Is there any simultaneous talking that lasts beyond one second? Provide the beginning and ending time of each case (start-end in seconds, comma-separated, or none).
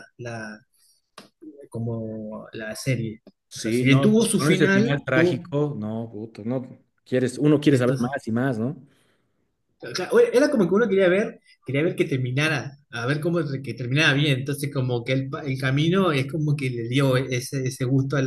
3.5-5.5